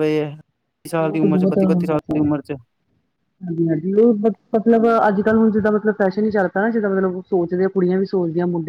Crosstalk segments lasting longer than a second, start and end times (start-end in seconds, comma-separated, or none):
1.0-2.3